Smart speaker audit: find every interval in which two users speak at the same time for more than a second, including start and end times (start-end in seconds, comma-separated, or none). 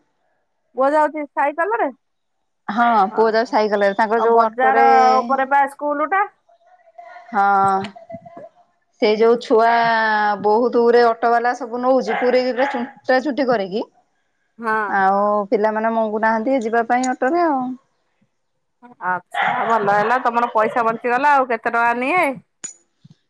3.2-4.8